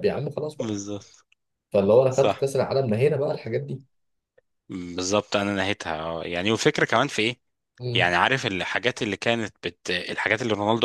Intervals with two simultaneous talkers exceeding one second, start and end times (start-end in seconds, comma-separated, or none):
none